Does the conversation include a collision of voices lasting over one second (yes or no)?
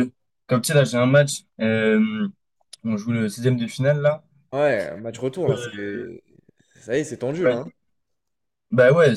no